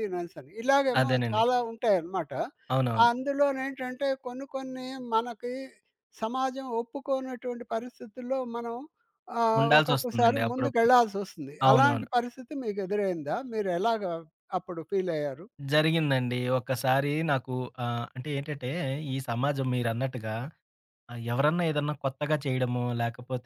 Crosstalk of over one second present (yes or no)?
yes